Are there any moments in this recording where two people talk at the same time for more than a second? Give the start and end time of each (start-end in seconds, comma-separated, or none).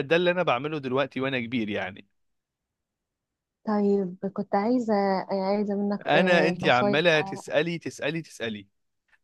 6.1-7.4